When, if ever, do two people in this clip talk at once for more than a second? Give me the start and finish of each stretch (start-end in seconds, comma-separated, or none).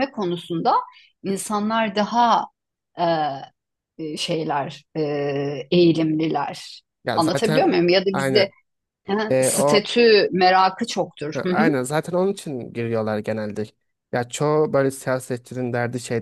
7.0-8.5